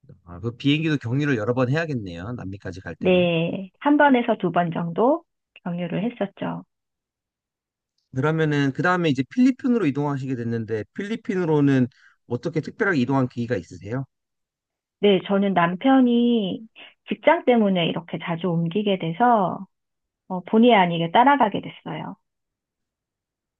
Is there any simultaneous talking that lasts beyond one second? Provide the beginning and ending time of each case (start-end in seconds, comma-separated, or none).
none